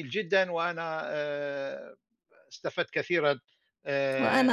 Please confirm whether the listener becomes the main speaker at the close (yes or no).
yes